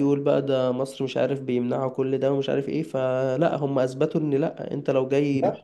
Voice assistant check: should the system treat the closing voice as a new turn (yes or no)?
no